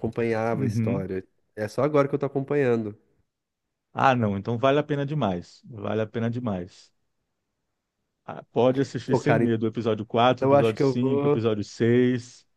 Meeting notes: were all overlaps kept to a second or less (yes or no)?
no